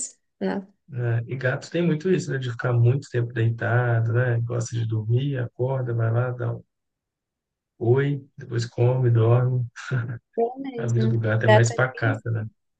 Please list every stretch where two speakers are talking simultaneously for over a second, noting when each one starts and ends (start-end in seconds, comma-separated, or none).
10.8-12.2